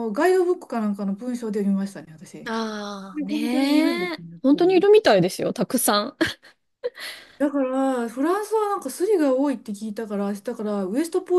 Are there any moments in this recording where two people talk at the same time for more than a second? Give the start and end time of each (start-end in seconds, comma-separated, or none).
3.1-4.9